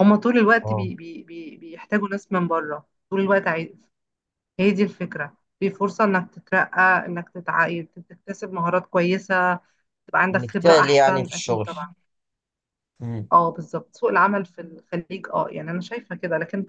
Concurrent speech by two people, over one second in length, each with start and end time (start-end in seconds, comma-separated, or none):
10.3-11.7